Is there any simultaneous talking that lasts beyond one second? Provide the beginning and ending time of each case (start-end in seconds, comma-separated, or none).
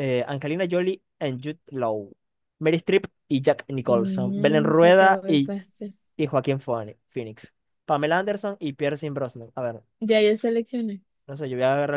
3.9-5.5